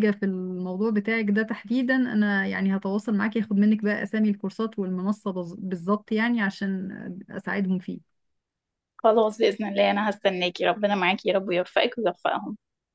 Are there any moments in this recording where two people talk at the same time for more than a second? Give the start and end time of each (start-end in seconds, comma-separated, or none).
none